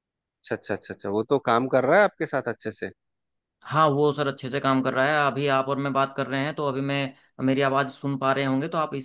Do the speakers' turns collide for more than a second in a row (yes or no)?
no